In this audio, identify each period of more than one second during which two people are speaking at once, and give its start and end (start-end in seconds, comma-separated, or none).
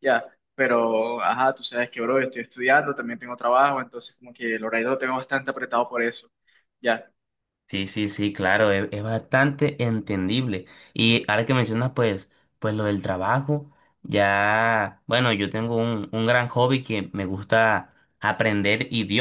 none